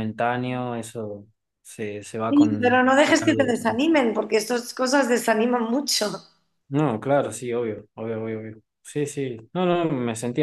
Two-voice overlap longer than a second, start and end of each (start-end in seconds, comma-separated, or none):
2.3-3.6